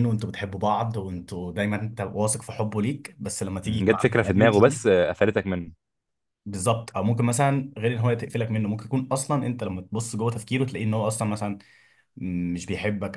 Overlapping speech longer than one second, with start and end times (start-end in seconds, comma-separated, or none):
3.6-4.9